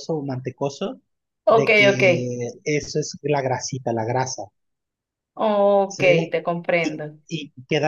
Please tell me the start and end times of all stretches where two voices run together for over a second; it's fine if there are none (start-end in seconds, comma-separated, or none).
none